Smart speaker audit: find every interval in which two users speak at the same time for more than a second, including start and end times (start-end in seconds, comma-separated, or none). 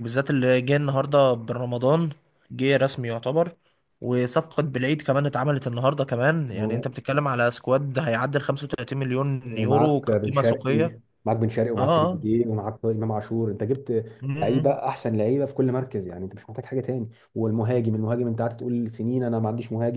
9.5-10.8